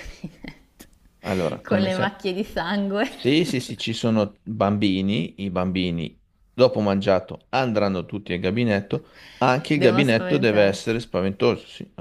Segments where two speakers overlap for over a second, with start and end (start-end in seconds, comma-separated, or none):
9.7-11.0